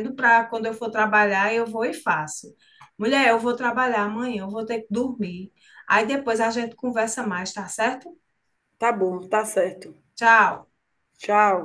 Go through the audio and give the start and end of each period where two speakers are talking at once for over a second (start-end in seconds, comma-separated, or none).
none